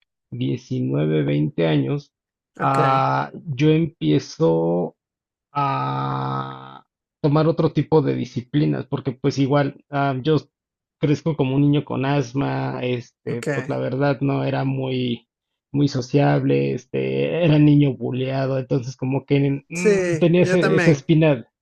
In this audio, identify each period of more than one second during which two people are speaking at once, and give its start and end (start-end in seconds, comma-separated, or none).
19.8-21.1